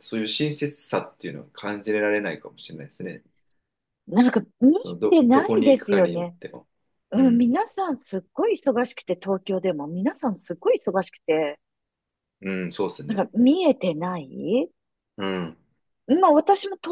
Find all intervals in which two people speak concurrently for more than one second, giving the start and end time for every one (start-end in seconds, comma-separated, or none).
5.1-6.3